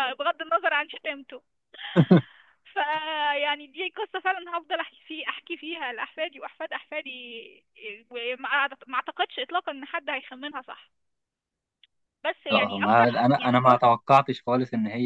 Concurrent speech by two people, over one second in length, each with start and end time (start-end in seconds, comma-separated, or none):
12.5-13.9